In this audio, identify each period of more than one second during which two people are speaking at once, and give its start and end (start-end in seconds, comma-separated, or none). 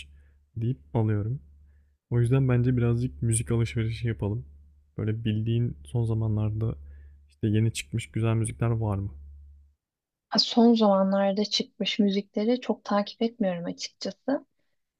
none